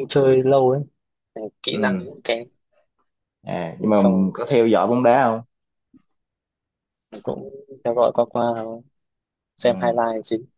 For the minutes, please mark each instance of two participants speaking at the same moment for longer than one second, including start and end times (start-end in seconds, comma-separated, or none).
none